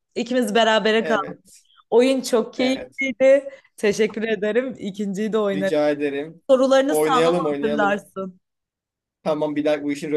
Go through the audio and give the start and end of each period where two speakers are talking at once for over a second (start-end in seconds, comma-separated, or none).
6.9-8.1